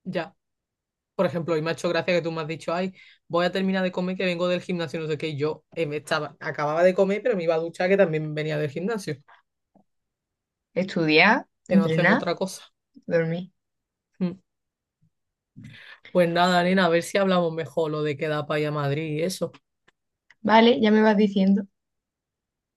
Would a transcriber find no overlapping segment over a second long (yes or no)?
yes